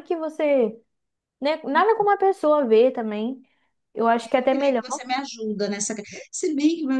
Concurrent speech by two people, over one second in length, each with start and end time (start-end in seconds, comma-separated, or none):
none